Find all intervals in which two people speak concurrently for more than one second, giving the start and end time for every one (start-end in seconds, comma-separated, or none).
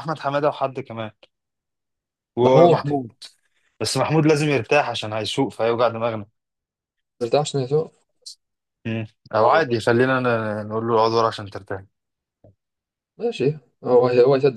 none